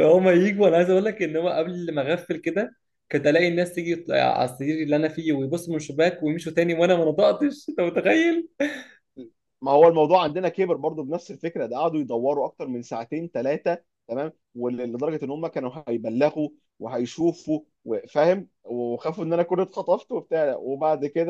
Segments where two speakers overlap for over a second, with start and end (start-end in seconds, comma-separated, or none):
none